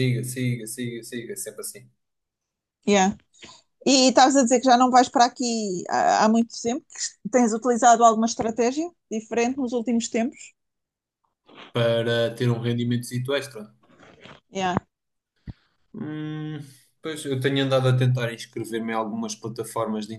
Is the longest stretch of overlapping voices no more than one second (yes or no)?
yes